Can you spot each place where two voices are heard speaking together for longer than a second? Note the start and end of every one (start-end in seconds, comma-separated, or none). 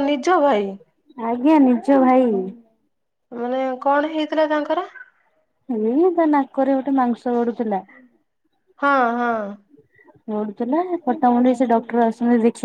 none